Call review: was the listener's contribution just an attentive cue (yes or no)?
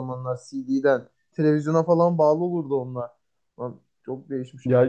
no